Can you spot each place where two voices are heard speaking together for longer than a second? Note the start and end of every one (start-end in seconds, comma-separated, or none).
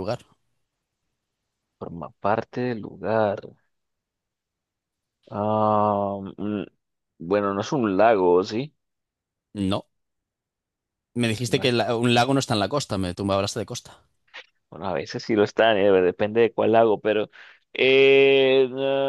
none